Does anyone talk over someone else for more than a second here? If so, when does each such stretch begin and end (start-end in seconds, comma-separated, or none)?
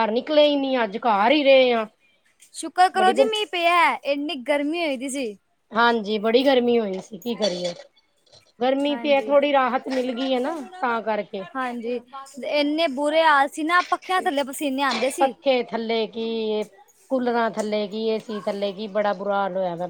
none